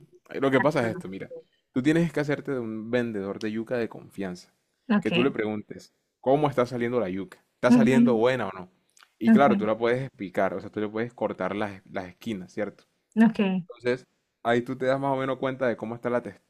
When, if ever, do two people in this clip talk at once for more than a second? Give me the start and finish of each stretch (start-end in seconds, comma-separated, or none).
none